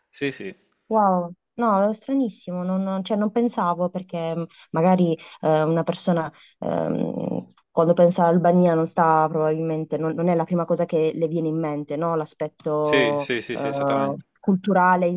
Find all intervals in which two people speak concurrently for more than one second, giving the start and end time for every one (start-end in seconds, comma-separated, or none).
12.8-14.2